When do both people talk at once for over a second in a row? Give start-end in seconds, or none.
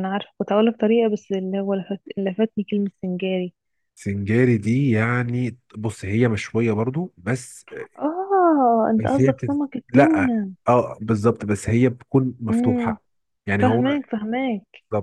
9.0-10.3